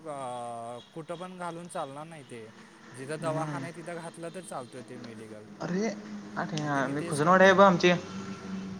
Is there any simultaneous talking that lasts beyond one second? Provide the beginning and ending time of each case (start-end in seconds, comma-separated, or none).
none